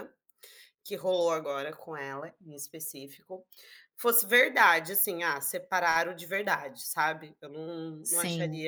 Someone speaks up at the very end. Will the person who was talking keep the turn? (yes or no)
yes